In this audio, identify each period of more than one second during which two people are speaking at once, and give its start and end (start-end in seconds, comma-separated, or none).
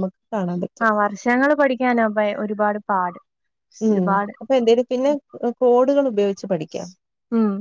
none